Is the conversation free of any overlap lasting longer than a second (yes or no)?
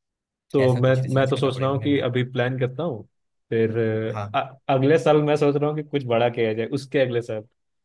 no